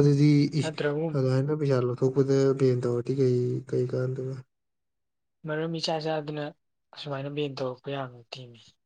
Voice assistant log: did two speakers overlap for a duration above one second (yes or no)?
no